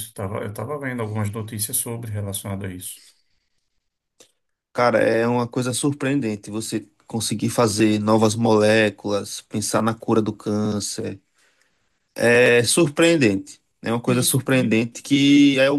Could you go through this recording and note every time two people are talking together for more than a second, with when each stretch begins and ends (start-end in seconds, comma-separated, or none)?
none